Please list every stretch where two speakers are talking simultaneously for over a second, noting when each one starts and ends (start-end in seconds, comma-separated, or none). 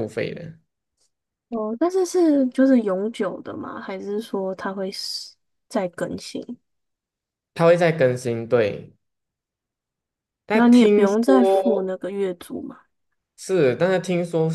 10.5-11.9